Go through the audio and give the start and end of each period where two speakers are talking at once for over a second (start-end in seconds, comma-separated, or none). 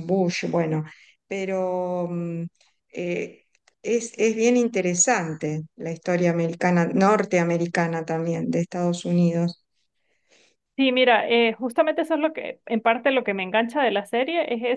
none